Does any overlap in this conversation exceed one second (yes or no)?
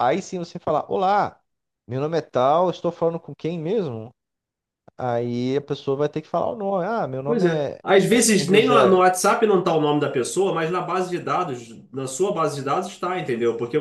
yes